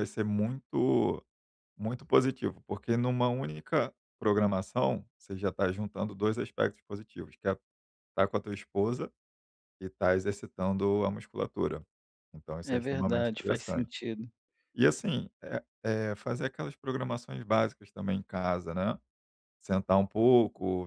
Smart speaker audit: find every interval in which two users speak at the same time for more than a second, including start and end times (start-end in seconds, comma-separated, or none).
12.6-13.9